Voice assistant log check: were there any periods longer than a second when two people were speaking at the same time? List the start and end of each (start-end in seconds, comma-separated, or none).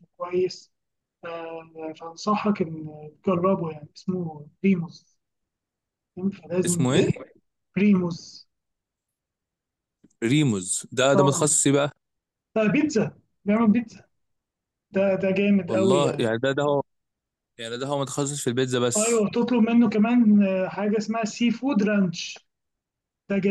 none